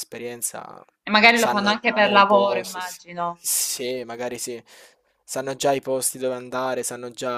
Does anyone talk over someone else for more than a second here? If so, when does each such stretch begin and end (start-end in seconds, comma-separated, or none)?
1.3-3.5